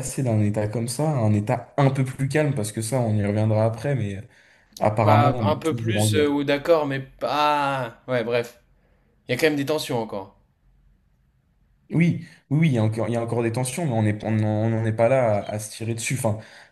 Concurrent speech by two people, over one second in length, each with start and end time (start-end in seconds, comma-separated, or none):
5.0-6.3